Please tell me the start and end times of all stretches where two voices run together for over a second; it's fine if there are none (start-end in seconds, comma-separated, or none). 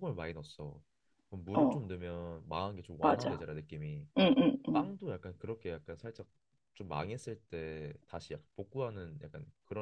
none